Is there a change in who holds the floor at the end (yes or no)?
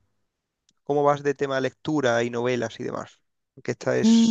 yes